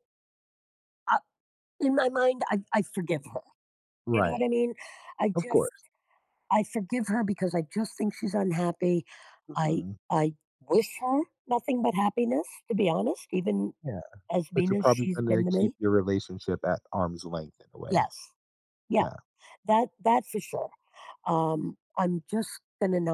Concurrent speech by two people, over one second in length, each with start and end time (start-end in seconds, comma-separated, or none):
14.5-15.8